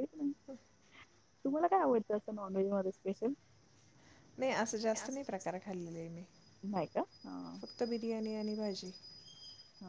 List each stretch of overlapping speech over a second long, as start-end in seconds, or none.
none